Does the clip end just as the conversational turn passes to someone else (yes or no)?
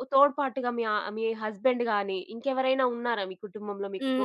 yes